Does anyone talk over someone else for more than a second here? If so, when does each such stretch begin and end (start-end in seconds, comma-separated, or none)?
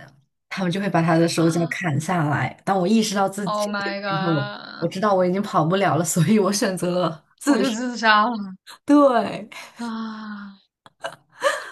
3.4-4.9